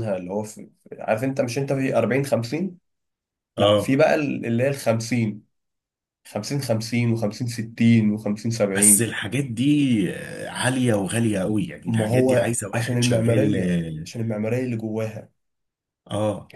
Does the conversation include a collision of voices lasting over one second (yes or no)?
yes